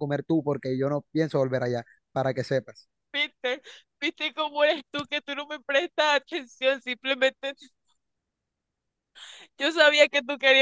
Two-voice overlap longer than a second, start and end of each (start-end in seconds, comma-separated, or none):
none